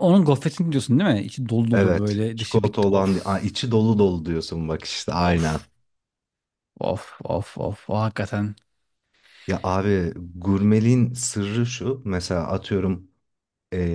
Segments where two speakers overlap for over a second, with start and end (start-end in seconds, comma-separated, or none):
1.7-3.4